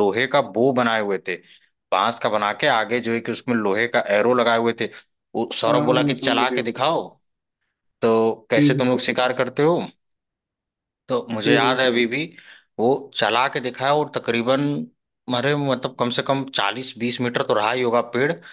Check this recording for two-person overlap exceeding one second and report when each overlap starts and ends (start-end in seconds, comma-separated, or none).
5.7-7.0